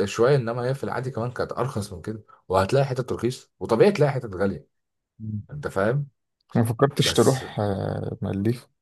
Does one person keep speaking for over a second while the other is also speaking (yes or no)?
no